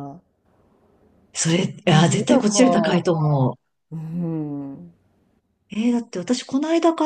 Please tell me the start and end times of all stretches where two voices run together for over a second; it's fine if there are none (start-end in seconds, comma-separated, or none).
1.4-3.1